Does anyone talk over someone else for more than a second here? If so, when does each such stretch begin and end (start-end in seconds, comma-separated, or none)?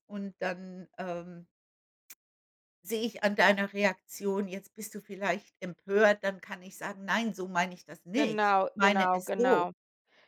8.1-9.7